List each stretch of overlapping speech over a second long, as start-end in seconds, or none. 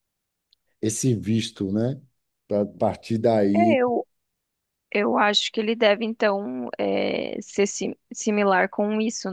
none